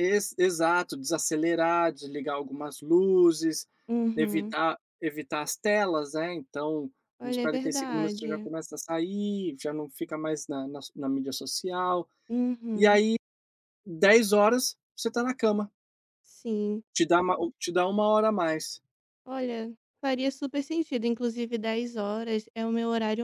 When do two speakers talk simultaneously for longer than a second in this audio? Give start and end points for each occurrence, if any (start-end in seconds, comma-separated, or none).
7.2-8.5